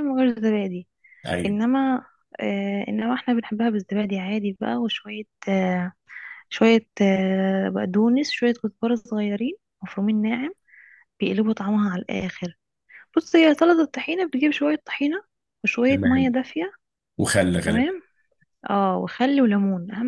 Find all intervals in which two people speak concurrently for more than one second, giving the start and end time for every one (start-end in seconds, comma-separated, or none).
none